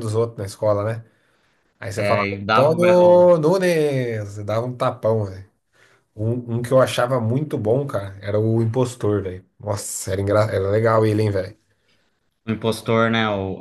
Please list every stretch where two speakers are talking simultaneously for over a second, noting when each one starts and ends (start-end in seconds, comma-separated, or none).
2.0-3.3